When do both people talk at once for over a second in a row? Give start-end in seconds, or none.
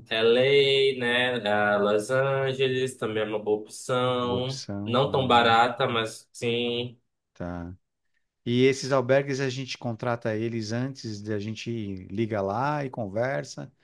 4.2-5.5